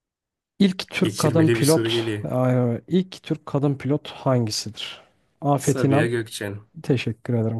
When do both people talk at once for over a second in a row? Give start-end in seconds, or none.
1.0-2.3